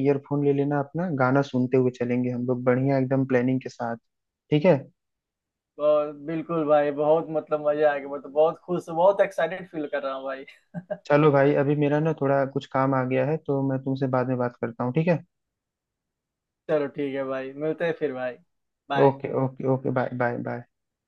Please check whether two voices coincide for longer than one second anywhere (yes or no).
no